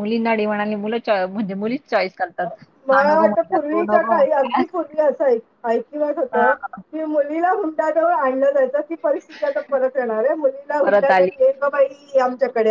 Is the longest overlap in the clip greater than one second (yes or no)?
yes